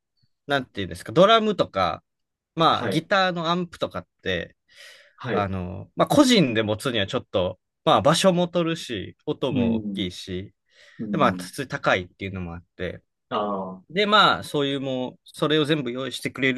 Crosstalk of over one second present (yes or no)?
no